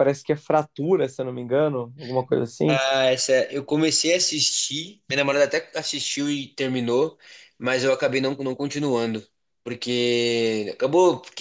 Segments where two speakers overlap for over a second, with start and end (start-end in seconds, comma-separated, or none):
none